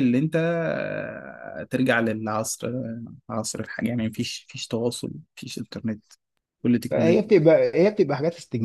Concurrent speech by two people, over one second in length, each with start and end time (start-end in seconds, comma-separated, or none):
none